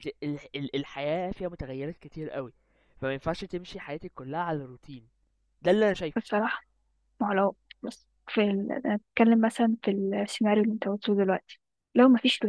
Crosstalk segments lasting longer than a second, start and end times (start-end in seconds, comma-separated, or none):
none